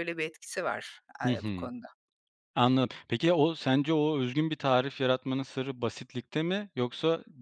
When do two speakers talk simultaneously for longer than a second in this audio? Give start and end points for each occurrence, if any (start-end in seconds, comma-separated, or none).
none